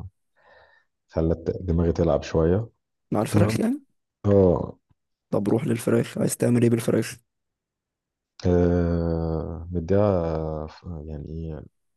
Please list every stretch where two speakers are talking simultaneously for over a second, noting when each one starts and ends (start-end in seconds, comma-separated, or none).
none